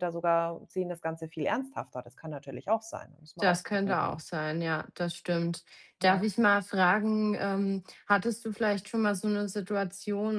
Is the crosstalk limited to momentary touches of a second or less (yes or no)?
yes